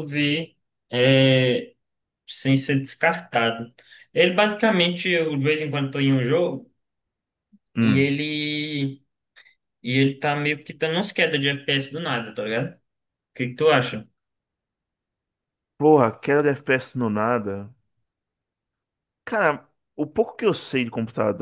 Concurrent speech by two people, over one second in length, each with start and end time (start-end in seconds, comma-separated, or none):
none